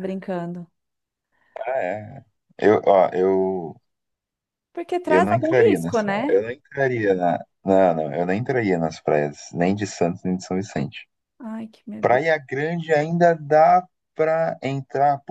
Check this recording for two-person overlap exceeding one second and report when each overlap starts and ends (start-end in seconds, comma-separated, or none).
5.0-6.4